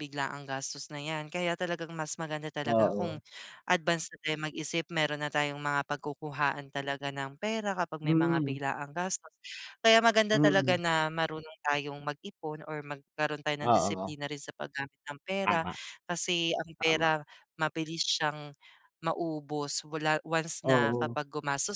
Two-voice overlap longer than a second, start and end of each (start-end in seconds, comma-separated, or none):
none